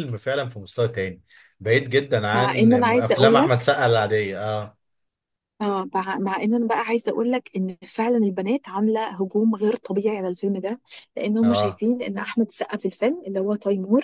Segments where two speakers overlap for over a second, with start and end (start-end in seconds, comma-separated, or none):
2.3-3.6